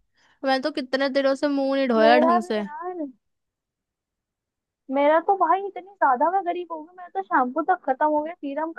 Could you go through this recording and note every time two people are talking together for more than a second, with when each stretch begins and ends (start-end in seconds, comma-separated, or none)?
none